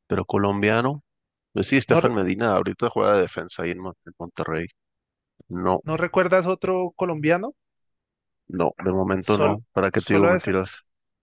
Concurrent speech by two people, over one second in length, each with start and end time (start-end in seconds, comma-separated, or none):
9.2-10.5